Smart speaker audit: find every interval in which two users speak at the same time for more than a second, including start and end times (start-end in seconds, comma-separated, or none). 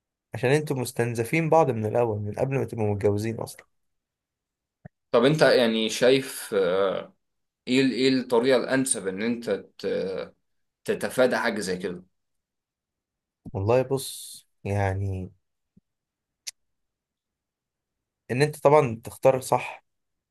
none